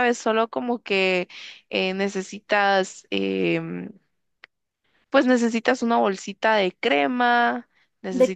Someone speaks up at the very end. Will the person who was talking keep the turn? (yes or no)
no